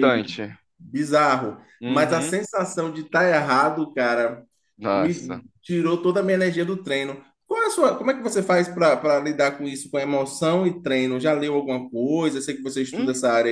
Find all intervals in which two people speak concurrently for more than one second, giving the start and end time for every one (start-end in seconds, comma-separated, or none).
none